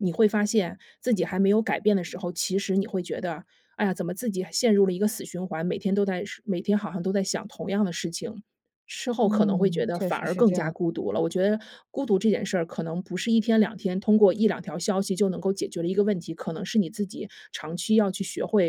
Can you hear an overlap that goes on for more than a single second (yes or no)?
yes